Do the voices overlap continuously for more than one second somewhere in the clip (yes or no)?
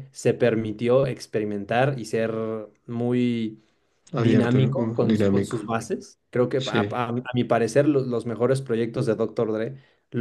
yes